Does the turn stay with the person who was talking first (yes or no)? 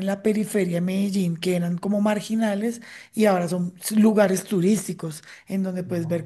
yes